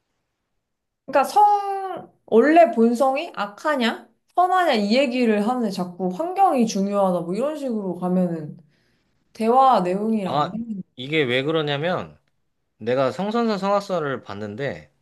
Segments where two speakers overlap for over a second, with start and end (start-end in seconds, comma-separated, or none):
none